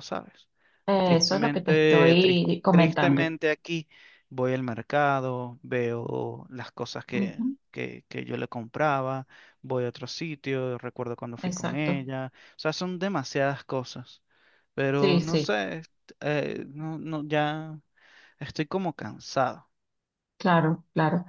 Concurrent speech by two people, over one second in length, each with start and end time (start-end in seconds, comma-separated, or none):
1.0-3.3